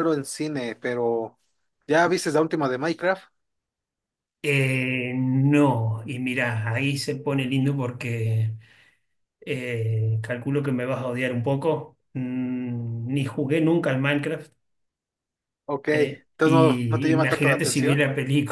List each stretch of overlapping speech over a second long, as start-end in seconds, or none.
15.9-18.0